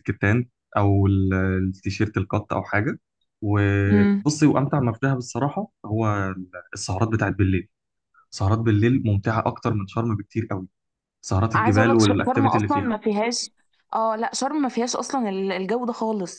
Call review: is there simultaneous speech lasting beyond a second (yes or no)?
yes